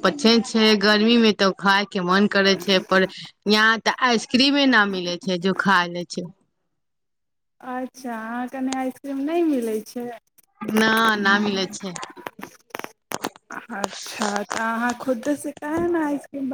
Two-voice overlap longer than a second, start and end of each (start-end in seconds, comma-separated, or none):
none